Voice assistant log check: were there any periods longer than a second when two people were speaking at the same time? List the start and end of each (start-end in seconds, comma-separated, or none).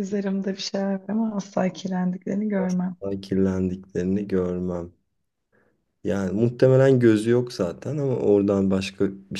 none